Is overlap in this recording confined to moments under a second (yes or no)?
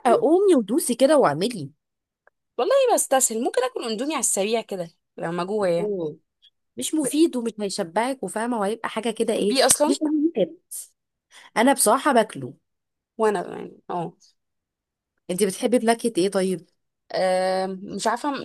yes